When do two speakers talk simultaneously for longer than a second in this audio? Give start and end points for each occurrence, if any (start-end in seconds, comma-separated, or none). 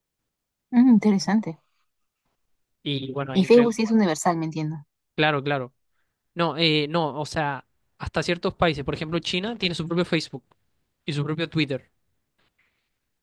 none